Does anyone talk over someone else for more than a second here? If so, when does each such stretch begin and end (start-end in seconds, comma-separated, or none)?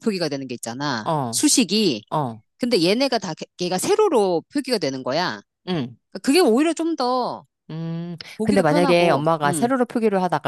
8.4-9.7